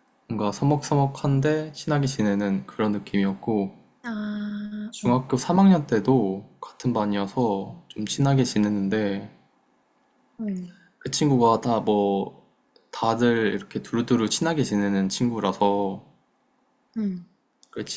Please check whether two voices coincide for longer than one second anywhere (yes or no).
no